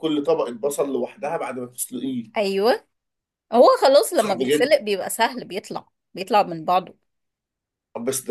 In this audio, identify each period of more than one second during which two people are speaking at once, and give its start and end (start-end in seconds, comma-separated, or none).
none